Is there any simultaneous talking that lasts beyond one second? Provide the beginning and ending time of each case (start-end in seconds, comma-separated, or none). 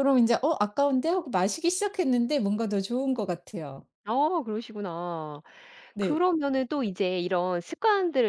none